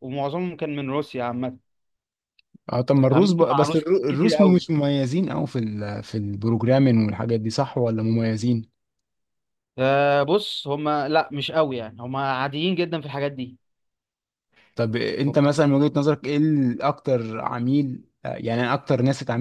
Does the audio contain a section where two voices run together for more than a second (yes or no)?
yes